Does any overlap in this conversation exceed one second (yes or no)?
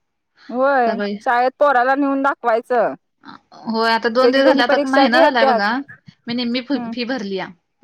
yes